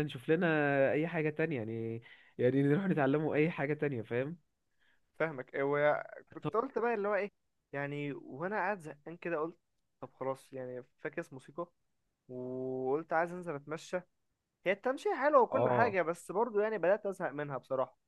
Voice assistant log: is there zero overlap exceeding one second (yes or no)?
yes